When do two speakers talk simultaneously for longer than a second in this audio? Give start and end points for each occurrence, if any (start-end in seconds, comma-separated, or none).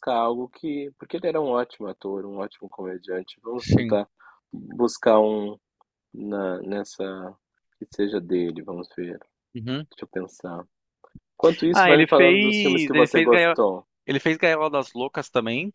11.7-13.6